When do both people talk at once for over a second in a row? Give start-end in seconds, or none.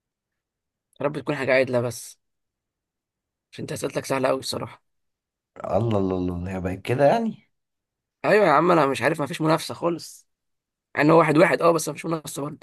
none